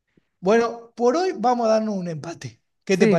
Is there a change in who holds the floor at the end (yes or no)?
yes